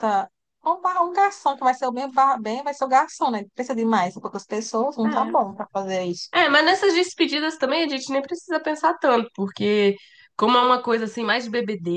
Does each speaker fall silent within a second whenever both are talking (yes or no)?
yes